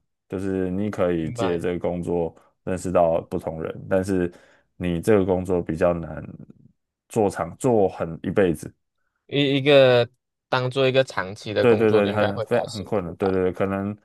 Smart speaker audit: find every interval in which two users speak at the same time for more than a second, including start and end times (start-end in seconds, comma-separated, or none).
11.6-13.3